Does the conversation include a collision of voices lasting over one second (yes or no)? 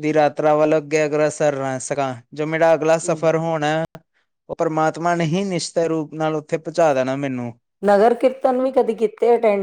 no